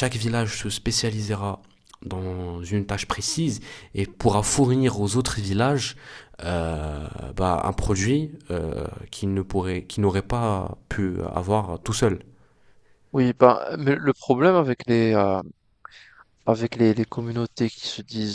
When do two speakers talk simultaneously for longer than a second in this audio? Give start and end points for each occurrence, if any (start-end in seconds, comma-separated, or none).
none